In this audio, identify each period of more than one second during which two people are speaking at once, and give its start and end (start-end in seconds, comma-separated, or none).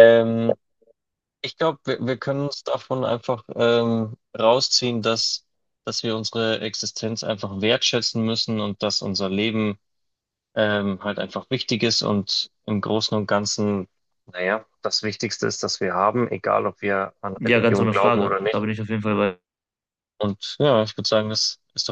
17.4-18.7